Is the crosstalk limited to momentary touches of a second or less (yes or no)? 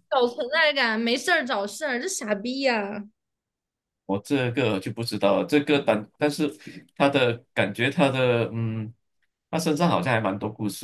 yes